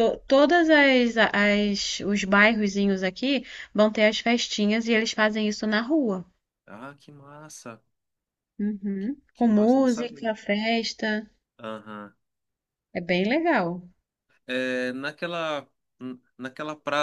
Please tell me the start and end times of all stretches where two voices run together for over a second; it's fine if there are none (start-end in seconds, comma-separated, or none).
9.0-10.3